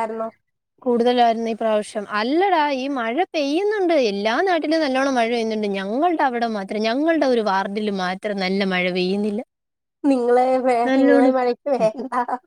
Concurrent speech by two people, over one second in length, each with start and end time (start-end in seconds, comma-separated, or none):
none